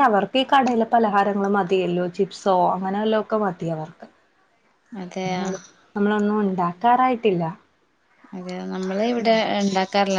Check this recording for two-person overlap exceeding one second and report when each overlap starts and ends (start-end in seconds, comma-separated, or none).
none